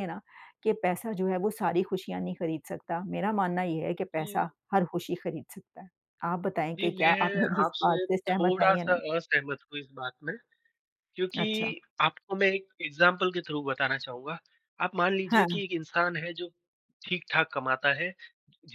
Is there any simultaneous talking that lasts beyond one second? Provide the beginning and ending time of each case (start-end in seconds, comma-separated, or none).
6.8-9.0